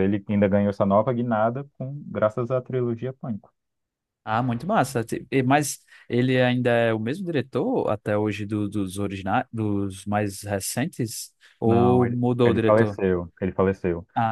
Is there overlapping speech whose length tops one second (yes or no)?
yes